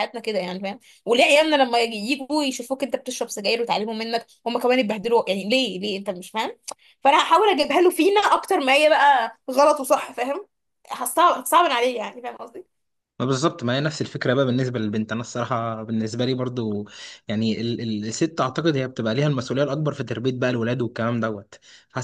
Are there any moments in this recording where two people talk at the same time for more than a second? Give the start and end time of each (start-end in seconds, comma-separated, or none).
none